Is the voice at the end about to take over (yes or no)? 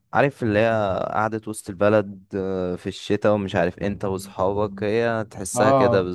yes